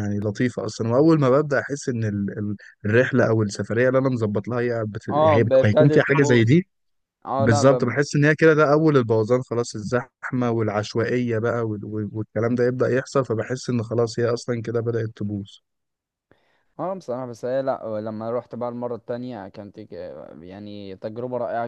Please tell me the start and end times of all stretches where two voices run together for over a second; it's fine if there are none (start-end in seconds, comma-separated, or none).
5.1-6.5